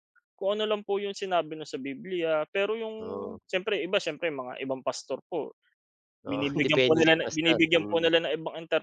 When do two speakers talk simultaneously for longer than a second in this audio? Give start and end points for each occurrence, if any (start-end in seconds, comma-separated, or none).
6.3-8.1